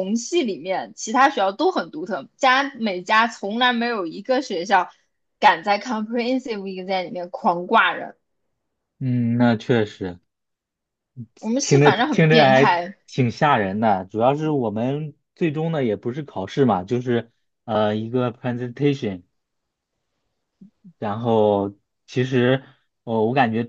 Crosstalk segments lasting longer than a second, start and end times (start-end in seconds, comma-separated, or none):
11.6-13.0